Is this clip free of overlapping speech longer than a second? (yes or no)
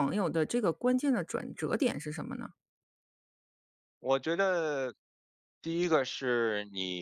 yes